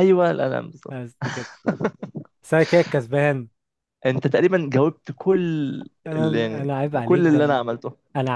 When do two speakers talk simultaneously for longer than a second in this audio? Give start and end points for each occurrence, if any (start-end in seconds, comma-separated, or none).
6.2-7.6